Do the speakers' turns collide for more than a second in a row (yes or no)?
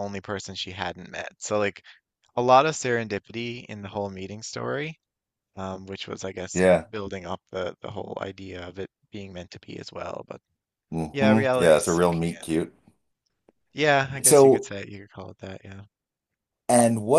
yes